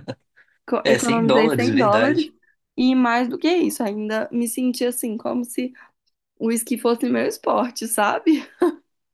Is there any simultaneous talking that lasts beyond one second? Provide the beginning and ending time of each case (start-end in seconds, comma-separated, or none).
0.8-2.2